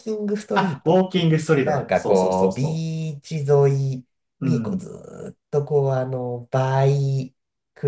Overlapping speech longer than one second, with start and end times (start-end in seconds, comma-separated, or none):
0.5-2.9